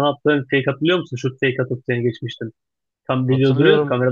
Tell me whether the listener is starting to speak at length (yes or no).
yes